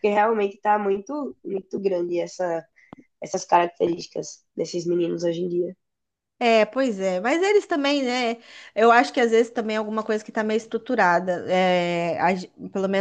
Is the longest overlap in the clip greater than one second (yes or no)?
no